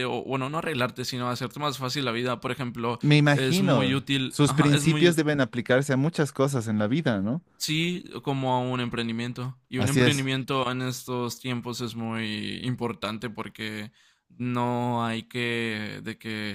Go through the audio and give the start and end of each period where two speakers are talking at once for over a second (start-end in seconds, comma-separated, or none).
3.0-5.2